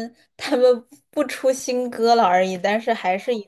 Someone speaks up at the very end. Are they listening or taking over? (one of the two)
listening